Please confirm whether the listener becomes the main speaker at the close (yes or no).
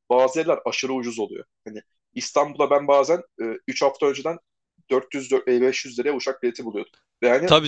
no